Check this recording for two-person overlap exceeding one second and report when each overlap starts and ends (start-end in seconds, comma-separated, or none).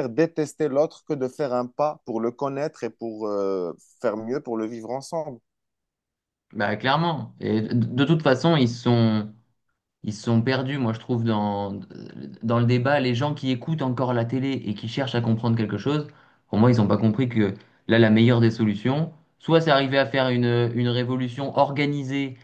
none